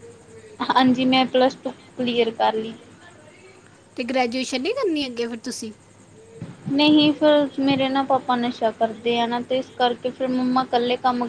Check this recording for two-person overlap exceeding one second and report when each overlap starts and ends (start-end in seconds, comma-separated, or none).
none